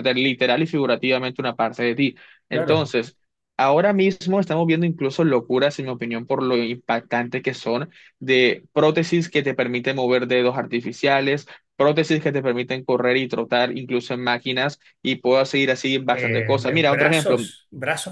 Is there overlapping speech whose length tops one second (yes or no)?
yes